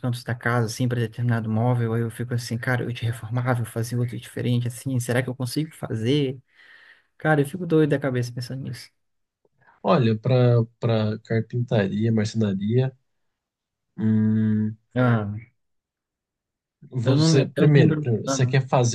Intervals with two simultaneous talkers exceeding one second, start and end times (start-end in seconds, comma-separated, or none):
17.0-18.4